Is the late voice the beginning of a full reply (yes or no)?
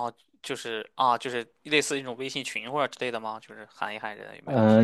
yes